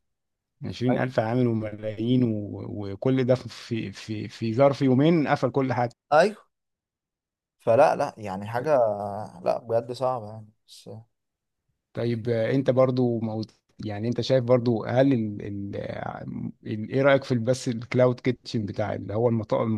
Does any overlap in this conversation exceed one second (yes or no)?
no